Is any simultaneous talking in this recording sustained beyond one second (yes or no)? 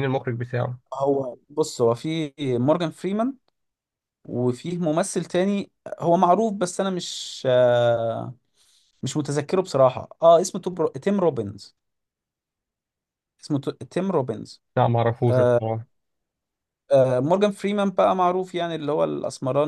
no